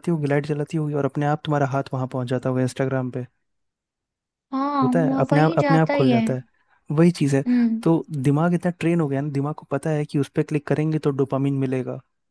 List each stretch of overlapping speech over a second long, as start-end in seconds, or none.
4.8-6.2